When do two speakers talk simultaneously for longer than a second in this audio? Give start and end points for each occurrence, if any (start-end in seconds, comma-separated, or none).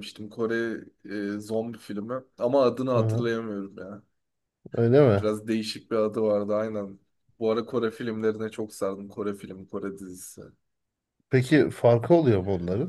none